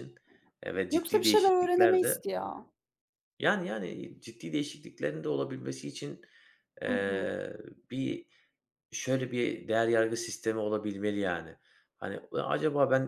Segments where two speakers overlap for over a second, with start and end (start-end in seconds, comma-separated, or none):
0.9-2.2